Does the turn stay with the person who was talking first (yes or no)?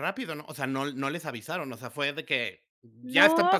no